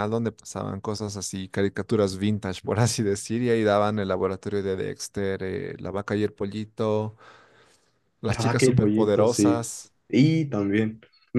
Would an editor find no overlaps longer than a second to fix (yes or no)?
no